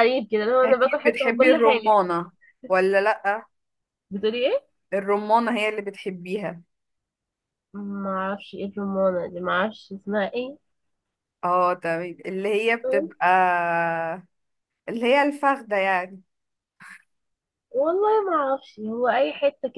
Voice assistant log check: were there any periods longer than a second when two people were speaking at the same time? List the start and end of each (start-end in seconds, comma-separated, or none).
0.6-2.0